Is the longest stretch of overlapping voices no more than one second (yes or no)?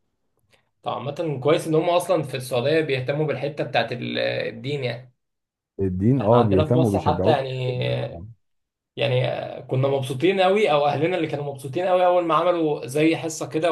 no